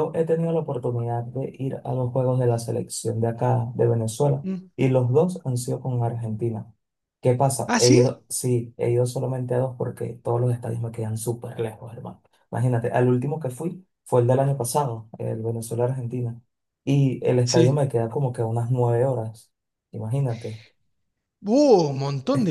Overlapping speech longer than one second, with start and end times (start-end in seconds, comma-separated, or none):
none